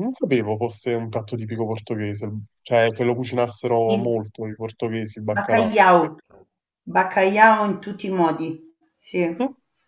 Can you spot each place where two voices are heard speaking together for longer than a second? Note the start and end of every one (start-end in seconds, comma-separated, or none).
none